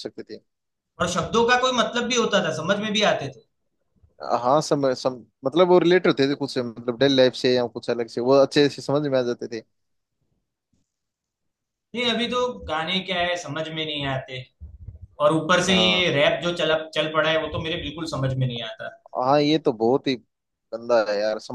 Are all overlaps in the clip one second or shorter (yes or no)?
yes